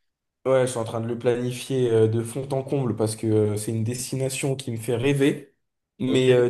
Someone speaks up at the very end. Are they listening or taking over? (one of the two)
listening